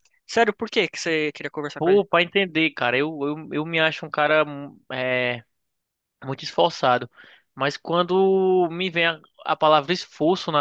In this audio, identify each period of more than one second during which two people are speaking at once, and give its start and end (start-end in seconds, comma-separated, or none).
none